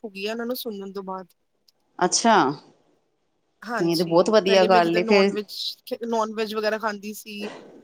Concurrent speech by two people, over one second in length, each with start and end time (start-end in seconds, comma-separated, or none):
3.7-5.3